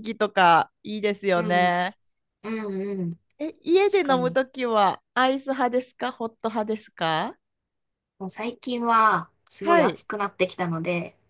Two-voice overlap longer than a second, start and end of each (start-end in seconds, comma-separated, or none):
none